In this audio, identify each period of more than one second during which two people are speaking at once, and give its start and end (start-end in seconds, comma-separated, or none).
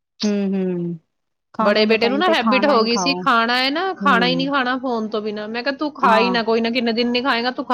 1.6-3.2